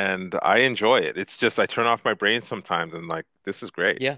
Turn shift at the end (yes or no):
yes